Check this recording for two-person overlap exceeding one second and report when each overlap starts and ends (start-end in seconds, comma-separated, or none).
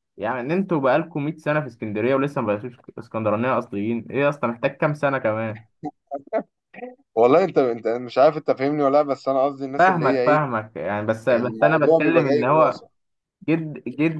11.3-12.8